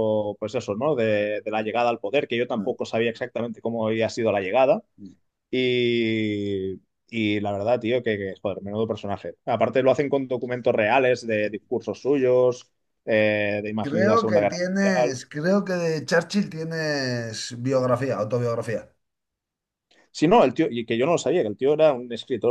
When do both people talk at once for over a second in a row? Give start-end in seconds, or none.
13.8-15.2